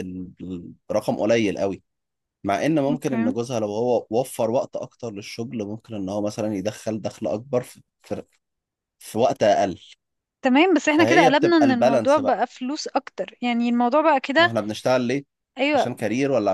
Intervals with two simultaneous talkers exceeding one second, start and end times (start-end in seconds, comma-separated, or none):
10.9-12.4